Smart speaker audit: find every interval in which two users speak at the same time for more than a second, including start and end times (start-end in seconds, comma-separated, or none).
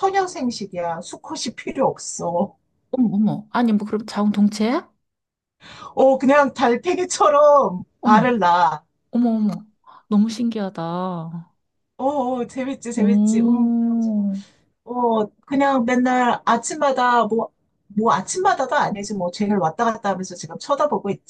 12.9-14.3